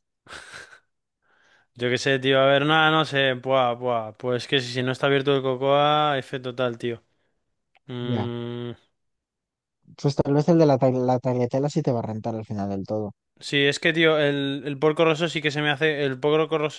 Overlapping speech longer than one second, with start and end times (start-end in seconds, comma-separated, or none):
none